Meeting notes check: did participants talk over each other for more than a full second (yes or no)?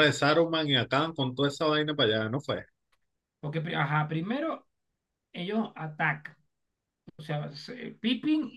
no